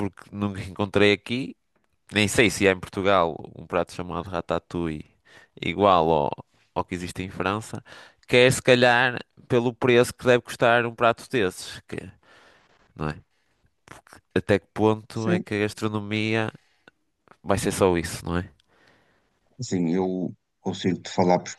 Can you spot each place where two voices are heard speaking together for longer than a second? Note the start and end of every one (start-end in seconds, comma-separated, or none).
none